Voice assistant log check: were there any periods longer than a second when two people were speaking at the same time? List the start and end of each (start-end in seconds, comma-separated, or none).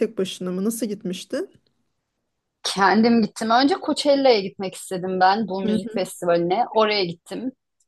none